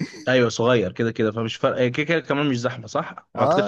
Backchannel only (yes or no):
no